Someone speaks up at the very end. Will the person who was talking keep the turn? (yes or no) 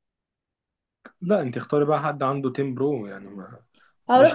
no